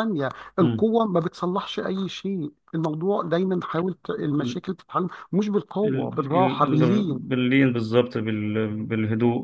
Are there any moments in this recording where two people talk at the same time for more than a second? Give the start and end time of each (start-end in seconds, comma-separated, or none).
5.8-7.3